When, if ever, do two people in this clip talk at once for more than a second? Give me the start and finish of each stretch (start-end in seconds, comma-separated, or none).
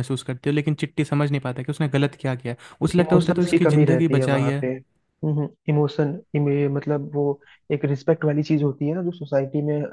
3.0-4.6